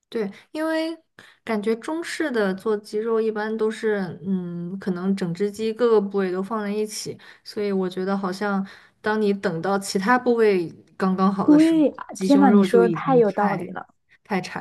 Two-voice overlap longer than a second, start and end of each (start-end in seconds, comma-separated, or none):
11.4-13.8